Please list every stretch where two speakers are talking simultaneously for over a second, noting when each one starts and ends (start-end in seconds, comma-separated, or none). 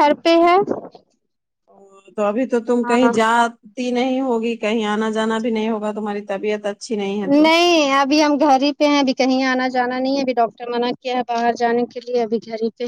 none